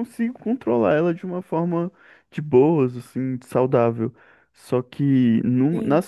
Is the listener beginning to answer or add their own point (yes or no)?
no